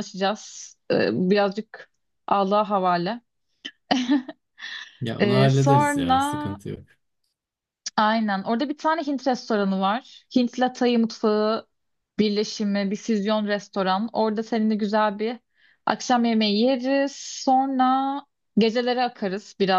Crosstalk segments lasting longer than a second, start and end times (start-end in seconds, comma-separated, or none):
5.2-6.6